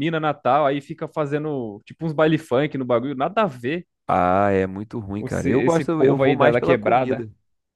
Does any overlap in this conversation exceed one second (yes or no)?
yes